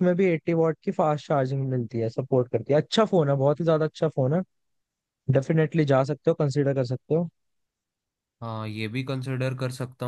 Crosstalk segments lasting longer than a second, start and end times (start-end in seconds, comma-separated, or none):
none